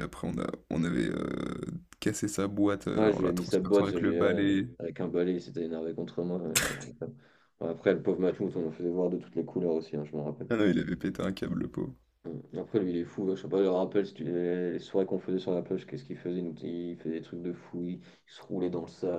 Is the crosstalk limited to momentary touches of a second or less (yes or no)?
no